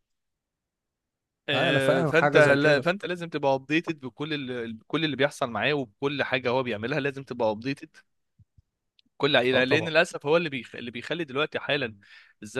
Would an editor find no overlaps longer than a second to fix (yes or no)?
no